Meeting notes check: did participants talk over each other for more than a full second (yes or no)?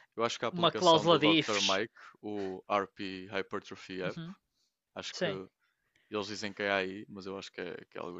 yes